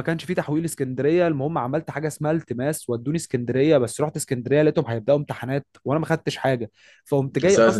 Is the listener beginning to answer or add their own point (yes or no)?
no